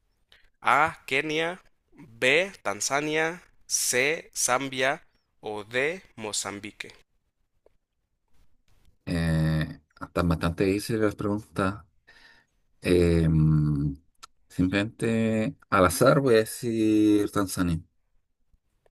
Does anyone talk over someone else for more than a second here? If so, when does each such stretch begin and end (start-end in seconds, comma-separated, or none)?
none